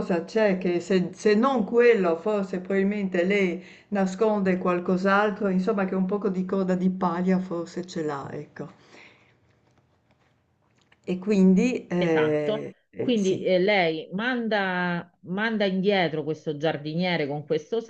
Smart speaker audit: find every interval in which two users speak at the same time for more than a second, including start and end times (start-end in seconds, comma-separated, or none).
12.0-13.5